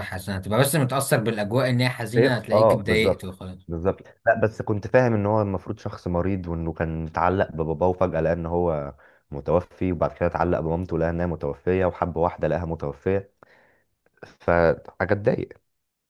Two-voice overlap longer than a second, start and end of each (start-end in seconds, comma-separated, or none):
2.2-3.6